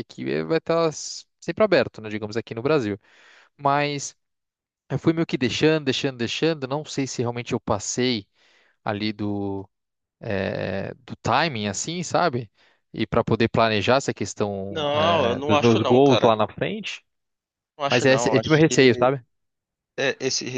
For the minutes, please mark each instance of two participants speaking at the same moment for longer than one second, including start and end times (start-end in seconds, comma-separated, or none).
14.7-16.3, 17.9-19.1